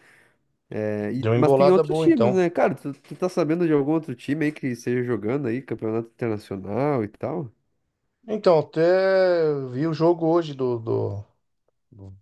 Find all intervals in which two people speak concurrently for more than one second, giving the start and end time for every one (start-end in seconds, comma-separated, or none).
1.2-2.4